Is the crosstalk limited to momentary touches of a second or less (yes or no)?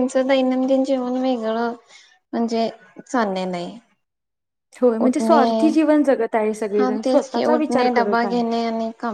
no